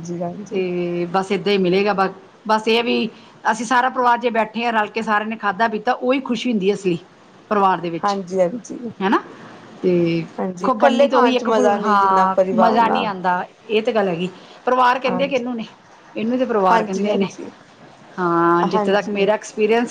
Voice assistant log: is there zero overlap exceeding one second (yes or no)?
no